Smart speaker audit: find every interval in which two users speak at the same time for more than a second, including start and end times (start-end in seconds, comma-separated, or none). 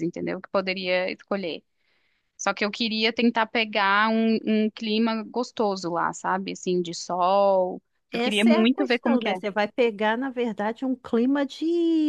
8.1-9.4